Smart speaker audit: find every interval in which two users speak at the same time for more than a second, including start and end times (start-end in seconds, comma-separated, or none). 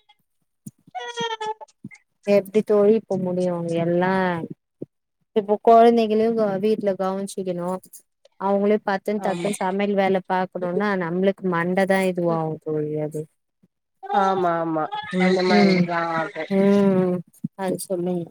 none